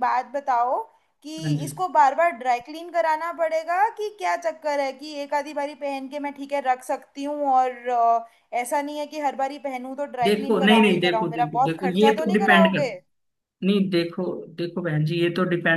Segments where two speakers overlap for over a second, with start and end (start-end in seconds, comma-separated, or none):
10.2-12.9